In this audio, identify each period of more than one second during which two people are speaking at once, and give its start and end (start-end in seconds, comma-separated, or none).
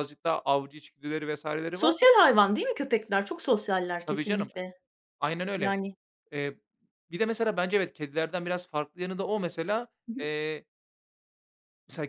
none